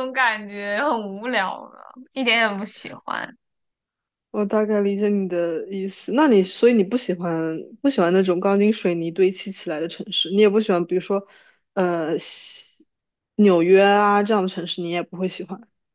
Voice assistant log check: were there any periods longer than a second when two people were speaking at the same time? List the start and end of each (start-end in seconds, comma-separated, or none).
none